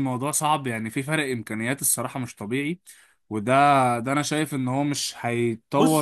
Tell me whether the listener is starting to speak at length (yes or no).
yes